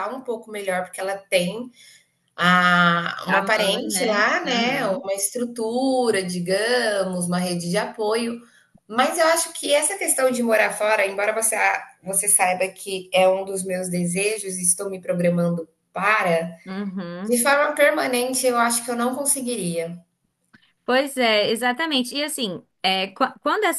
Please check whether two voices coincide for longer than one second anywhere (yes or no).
yes